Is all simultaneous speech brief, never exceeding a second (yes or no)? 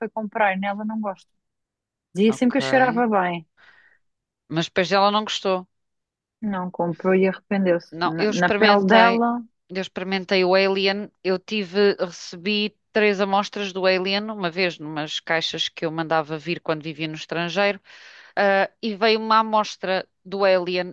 no